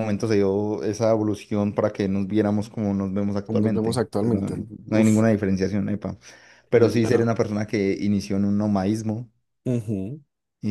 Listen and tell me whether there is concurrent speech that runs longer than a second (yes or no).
yes